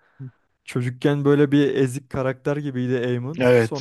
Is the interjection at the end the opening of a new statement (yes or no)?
no